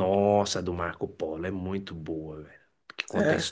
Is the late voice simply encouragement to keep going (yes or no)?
yes